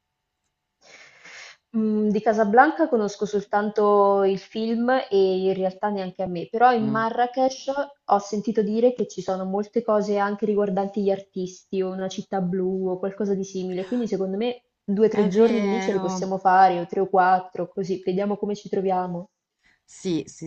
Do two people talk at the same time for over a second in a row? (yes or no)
yes